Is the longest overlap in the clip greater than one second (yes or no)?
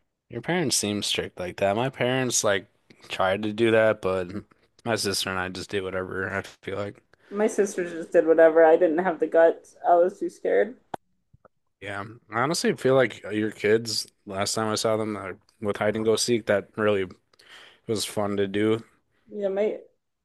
no